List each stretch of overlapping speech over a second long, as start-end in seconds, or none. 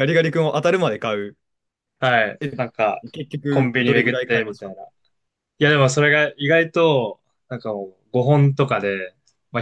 3.5-4.7